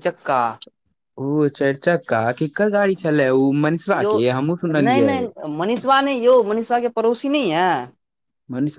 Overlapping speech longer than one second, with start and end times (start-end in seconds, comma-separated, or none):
none